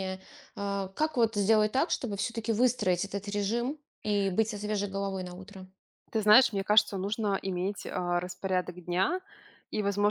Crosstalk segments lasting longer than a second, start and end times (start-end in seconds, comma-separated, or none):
none